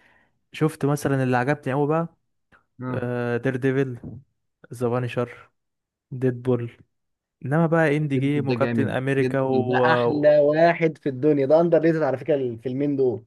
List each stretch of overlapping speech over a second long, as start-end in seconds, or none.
8.1-9.8